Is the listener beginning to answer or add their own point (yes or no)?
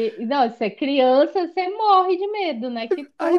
yes